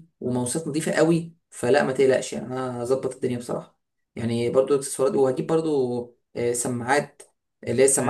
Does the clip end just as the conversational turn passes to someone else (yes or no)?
no